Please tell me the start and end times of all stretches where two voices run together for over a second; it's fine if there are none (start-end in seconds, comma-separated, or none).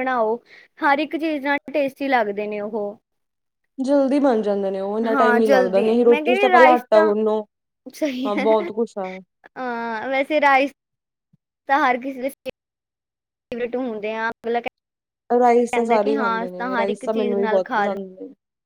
5.1-7.1, 15.4-17.9